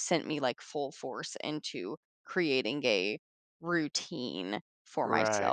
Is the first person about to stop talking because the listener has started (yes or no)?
yes